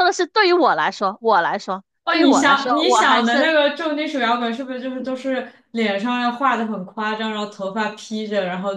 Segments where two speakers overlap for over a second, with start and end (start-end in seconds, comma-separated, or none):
2.0-3.5